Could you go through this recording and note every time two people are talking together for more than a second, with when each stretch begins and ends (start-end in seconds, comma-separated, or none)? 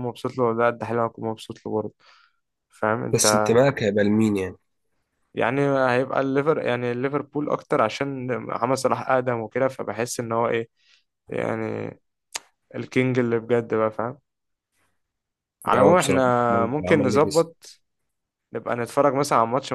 15.7-17.5